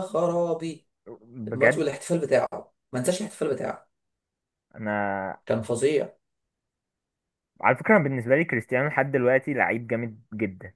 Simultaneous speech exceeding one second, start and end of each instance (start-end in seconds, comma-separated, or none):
none